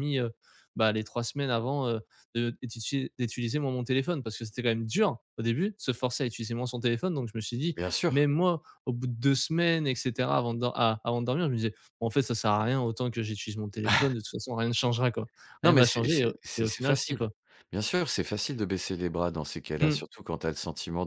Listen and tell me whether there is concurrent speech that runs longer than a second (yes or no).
yes